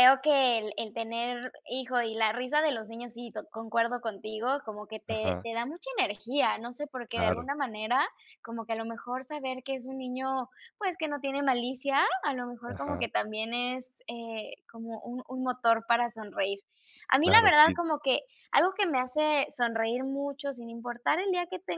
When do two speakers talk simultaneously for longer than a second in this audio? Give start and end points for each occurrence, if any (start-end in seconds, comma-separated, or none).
none